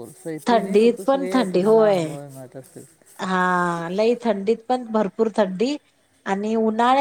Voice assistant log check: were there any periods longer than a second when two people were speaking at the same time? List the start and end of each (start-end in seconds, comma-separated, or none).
0.5-2.0